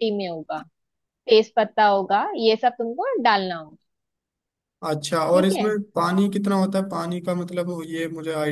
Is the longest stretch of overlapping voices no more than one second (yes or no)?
yes